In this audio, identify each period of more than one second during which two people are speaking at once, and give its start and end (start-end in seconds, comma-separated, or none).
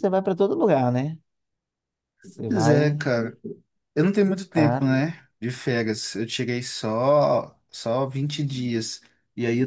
none